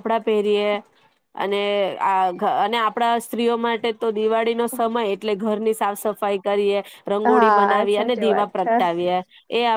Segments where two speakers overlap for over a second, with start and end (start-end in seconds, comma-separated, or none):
7.2-8.8